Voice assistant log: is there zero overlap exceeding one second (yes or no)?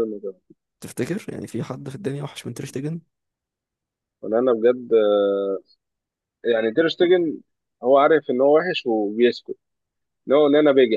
yes